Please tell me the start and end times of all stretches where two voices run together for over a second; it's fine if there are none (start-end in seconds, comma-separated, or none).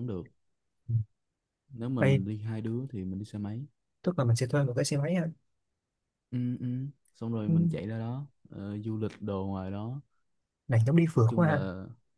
none